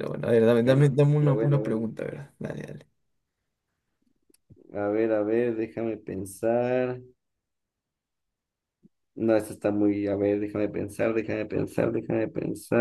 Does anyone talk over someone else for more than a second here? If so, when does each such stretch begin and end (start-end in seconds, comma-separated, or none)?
0.6-1.9